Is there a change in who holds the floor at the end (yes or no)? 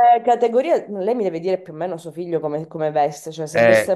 no